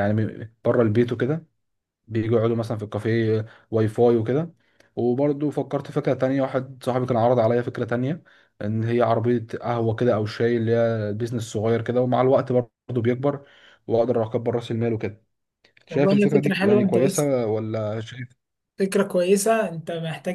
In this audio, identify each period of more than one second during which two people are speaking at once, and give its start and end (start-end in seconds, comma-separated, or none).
15.9-17.3